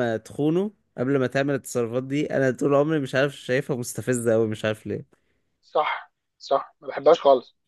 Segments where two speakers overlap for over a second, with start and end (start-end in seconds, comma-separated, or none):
none